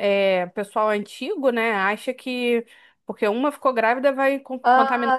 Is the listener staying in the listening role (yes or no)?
no